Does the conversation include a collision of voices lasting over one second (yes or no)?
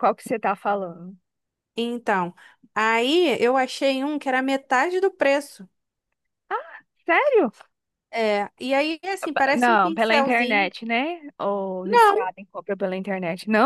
yes